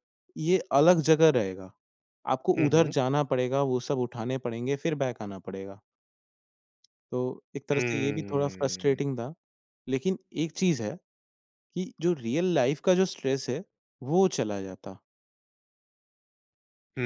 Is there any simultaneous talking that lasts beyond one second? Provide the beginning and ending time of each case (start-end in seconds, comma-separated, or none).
7.7-9.0